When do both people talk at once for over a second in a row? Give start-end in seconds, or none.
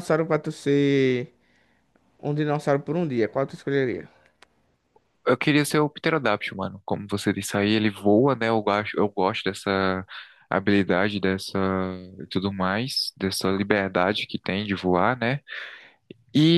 none